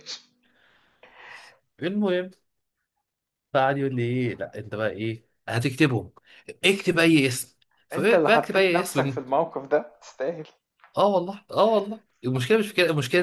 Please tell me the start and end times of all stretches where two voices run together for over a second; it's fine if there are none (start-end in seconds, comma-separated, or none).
7.9-9.2